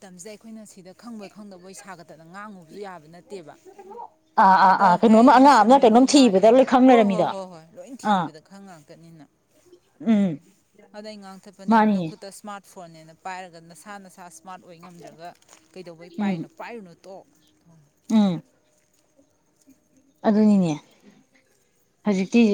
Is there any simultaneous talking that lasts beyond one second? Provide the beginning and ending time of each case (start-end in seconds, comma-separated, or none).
4.7-7.3